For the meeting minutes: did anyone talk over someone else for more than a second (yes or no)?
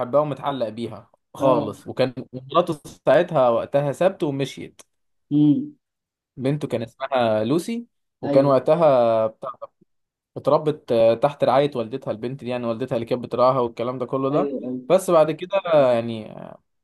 no